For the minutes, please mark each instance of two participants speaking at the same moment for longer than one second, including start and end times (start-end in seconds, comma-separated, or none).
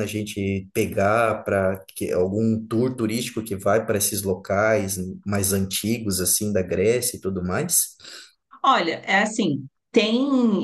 none